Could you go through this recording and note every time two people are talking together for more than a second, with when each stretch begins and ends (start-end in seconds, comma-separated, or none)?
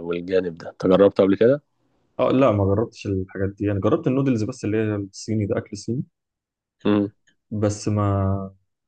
none